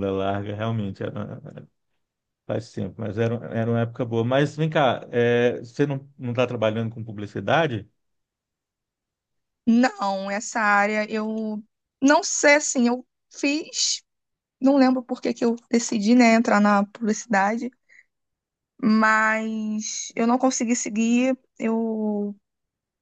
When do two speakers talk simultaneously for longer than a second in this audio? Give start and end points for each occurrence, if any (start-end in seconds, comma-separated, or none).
none